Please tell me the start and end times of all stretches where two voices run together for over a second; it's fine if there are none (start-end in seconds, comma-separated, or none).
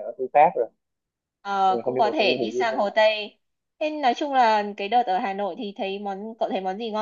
1.7-2.9